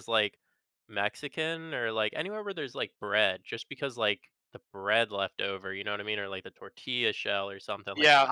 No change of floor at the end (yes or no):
no